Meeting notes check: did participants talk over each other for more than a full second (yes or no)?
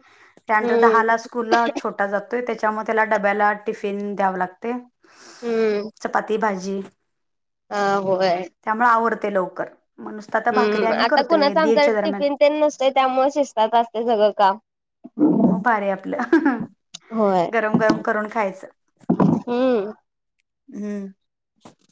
yes